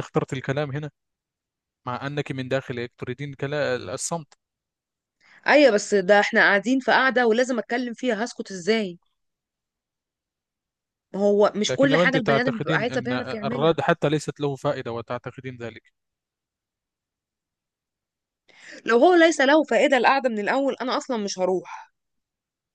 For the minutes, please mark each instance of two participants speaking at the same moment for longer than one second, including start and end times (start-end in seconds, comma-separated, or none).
11.7-13.8